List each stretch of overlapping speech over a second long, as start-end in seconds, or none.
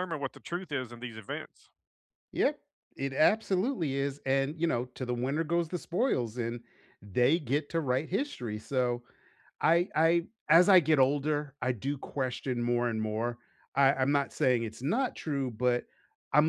none